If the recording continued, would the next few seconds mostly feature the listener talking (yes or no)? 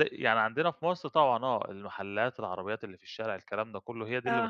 no